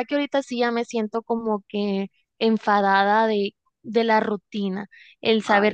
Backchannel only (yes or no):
yes